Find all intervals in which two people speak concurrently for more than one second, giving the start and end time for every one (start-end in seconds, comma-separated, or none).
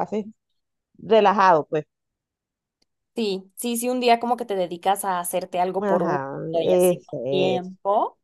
5.8-7.7